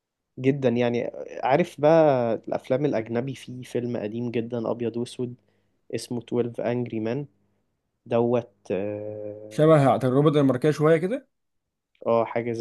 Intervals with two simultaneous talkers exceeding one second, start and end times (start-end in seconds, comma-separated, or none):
none